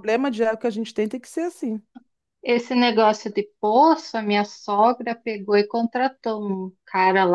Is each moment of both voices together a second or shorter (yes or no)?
yes